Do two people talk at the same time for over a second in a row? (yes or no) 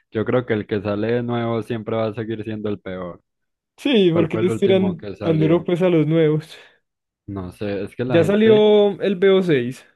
yes